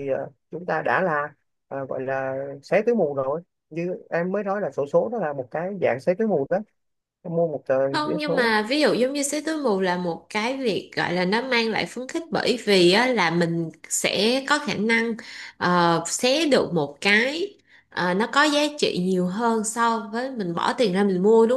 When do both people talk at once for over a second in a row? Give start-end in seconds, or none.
none